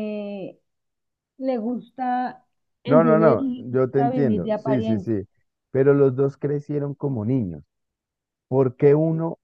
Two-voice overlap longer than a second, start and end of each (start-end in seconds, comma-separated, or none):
2.9-5.1